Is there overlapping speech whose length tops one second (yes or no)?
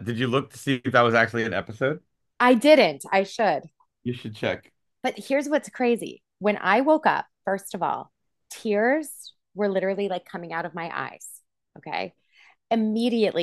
no